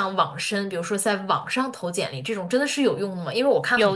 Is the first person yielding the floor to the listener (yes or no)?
no